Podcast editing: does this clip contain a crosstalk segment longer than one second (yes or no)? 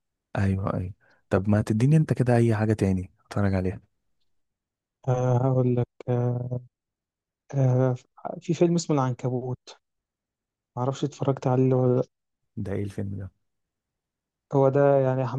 no